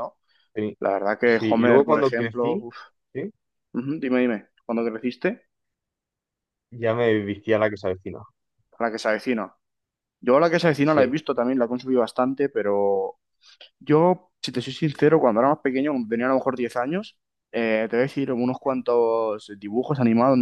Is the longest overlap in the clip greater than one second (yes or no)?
yes